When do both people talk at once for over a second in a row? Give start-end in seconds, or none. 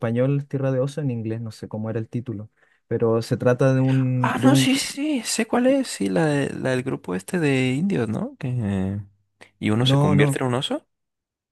none